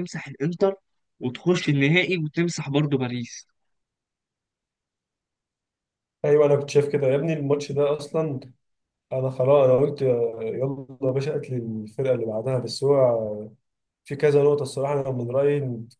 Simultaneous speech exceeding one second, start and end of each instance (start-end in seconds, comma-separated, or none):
none